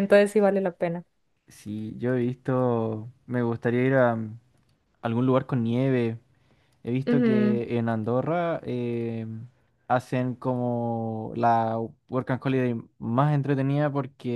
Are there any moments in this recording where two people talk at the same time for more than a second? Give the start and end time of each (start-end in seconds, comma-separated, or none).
none